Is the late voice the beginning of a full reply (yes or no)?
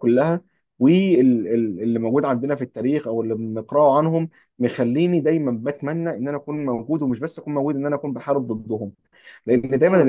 no